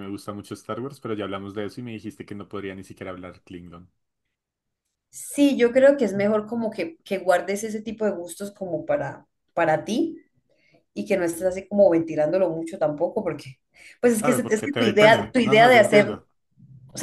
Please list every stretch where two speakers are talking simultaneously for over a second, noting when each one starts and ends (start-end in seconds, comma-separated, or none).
14.2-16.2